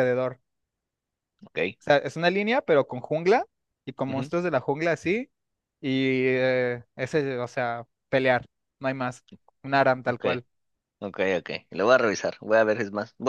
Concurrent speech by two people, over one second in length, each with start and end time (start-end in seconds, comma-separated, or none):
none